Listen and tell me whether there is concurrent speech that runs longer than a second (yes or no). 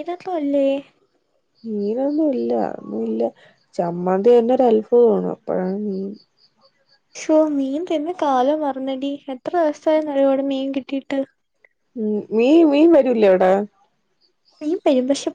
no